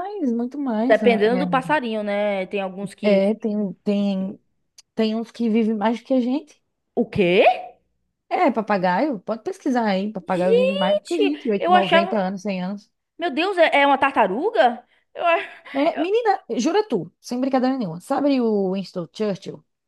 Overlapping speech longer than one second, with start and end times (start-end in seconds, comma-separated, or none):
10.3-12.2